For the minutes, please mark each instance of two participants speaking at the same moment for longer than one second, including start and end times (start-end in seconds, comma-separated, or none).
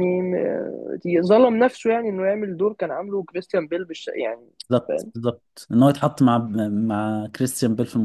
none